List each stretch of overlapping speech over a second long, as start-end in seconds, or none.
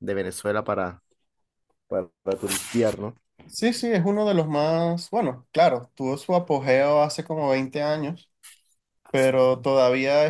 none